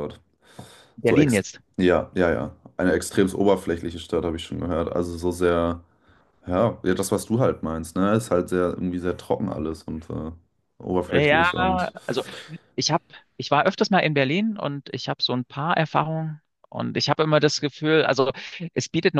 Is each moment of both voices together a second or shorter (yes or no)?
yes